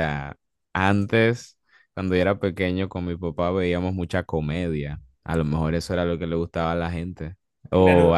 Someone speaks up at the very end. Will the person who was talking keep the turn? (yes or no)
no